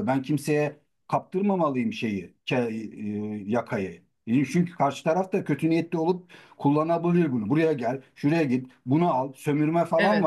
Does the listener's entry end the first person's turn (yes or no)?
yes